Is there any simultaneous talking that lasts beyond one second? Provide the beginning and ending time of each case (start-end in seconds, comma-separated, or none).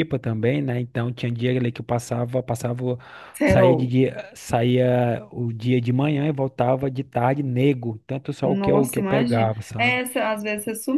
8.4-10.0